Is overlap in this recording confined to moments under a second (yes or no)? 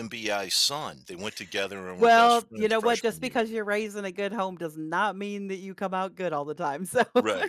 no